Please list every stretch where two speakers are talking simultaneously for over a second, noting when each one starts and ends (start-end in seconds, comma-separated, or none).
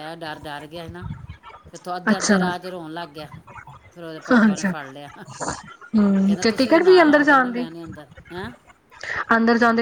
6.4-7.7